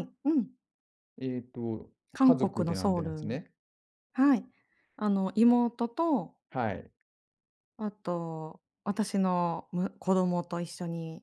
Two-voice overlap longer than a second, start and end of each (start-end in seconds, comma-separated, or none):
2.1-3.4